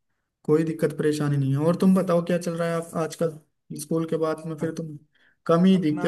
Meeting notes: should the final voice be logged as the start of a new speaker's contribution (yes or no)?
yes